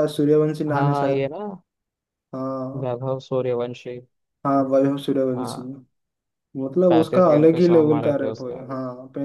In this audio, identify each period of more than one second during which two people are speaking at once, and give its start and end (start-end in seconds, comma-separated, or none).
6.9-8.6